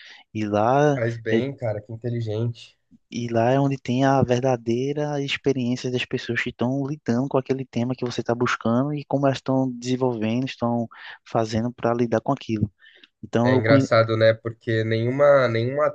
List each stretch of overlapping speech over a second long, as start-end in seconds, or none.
none